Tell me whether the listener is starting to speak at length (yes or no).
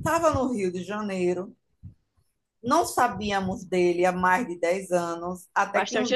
no